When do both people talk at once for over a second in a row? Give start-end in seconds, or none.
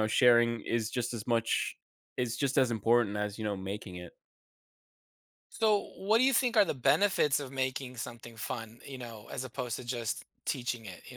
none